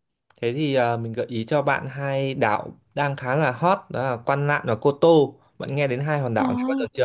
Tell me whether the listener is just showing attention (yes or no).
no